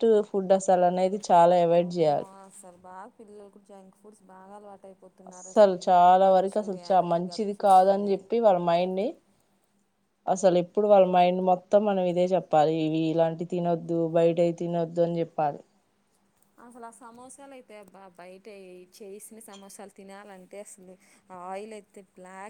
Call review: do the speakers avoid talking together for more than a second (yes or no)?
no